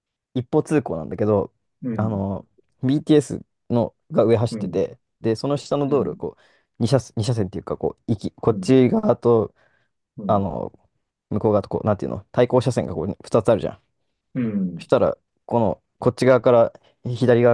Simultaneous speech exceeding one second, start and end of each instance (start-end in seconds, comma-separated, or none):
none